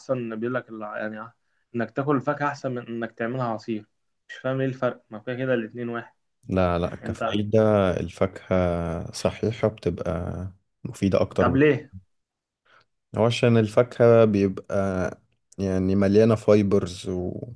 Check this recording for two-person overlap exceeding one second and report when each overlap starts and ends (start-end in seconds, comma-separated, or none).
none